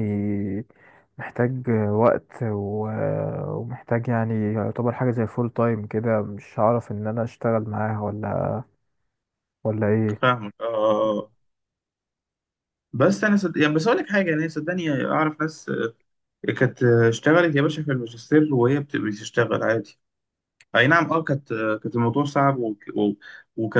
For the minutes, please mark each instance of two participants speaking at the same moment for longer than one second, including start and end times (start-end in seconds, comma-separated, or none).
none